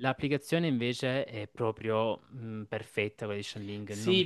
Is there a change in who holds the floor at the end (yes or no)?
yes